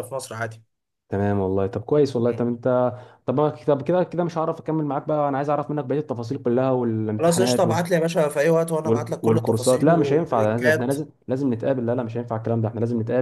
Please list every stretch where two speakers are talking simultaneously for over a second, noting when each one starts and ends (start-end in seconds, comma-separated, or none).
8.8-10.9